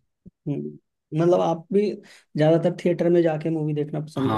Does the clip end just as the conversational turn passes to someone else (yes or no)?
yes